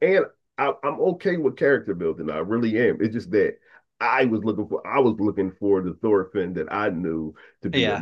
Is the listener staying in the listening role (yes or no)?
yes